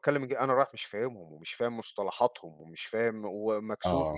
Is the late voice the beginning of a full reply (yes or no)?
no